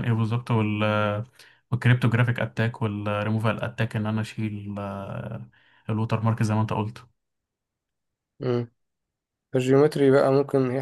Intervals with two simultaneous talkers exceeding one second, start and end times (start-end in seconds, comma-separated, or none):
none